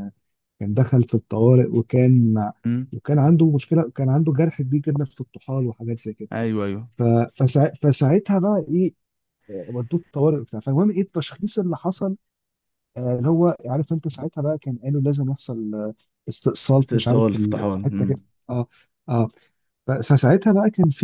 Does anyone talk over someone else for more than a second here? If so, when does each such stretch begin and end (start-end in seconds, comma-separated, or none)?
16.8-18.2